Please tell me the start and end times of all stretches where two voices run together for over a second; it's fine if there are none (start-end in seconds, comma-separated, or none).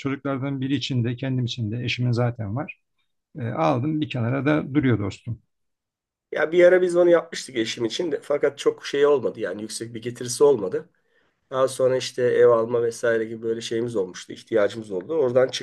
none